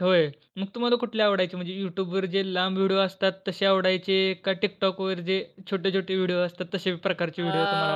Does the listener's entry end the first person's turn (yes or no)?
yes